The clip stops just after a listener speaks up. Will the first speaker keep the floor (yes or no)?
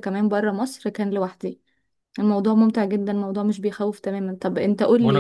no